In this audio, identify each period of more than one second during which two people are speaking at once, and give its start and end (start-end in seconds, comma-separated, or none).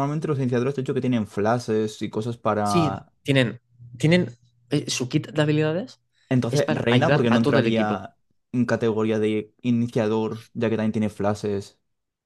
6.5-8.1